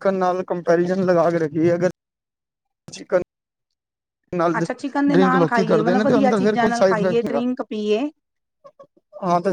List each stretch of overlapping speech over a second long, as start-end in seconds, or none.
4.6-7.4